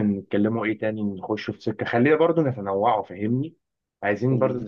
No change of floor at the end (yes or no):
yes